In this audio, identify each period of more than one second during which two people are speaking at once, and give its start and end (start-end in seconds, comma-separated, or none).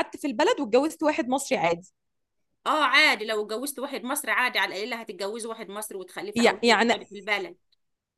none